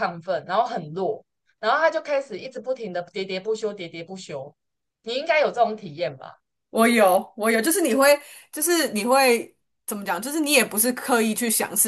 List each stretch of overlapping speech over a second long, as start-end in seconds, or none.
none